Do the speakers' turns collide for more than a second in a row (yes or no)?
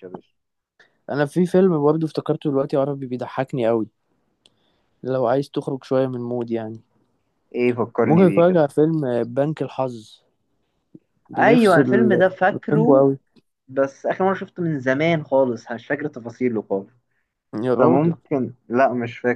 yes